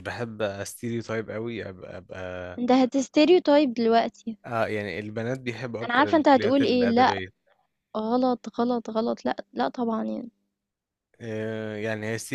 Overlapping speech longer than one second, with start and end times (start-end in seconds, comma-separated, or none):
5.8-7.1